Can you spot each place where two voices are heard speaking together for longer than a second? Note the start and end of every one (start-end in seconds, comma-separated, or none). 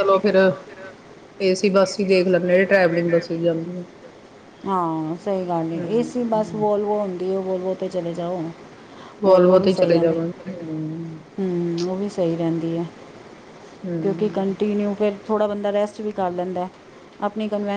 none